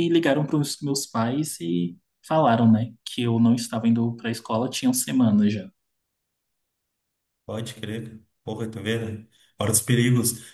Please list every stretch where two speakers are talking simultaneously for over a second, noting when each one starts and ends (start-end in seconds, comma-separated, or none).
none